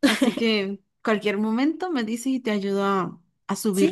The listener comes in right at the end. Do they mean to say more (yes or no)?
yes